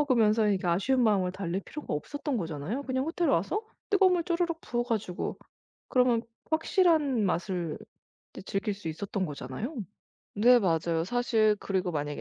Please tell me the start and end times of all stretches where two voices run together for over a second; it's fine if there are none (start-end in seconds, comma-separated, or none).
none